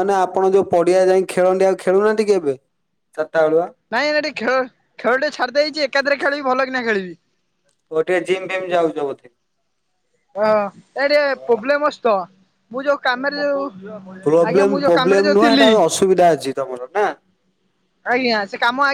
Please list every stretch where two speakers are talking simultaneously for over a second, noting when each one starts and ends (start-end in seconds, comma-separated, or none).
14.2-15.7